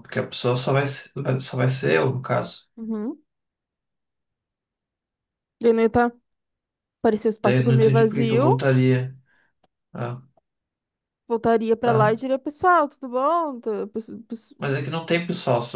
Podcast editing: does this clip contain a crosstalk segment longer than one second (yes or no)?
yes